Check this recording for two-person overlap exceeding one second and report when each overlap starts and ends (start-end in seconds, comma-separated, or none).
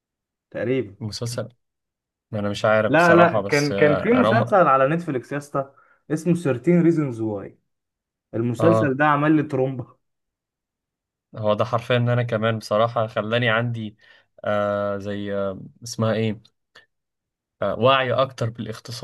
2.9-4.5